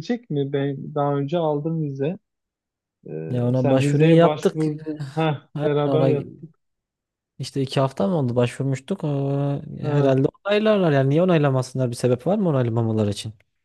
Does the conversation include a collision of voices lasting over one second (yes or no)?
yes